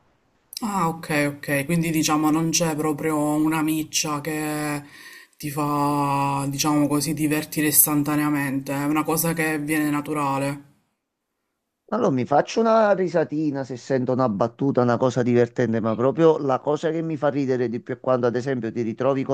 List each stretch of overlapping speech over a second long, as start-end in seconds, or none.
none